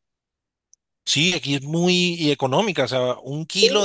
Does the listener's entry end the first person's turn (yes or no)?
no